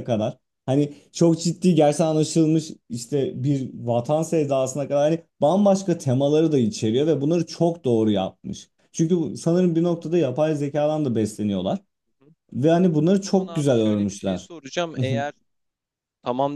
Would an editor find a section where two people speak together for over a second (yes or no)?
yes